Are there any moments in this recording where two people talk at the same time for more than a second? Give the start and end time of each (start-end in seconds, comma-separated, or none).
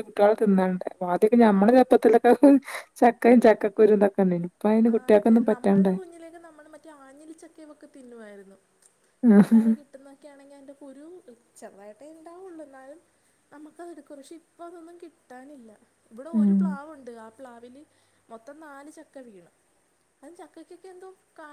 none